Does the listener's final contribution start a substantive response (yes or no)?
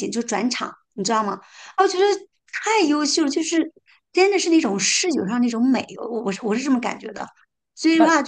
no